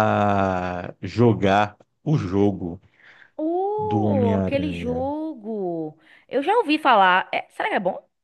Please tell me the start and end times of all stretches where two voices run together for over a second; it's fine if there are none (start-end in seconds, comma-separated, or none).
3.8-5.1